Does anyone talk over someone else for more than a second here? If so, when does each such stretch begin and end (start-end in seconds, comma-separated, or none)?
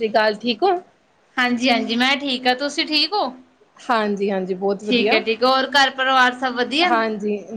none